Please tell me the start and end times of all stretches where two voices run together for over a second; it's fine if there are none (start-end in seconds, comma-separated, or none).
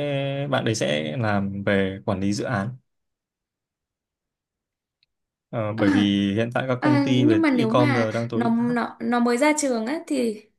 6.8-8.8